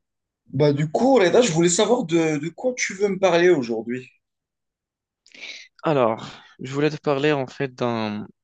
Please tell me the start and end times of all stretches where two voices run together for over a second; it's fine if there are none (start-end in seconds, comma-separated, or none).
none